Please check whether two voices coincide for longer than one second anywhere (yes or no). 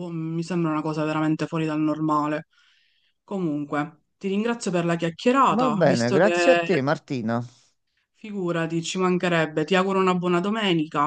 yes